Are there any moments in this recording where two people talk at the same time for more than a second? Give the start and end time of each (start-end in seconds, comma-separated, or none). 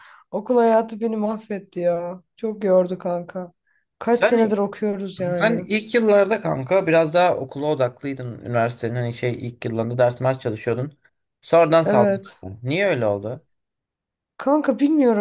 none